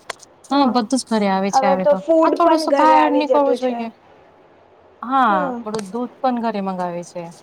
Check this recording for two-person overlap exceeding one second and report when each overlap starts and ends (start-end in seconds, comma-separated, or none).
1.5-3.8